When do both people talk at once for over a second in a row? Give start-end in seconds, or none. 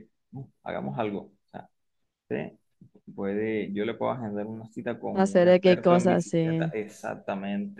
5.1-6.7